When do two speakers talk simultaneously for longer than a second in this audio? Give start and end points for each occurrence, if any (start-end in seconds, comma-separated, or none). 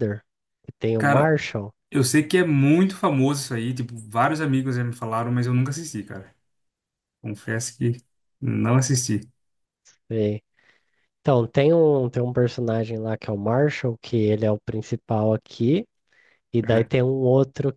none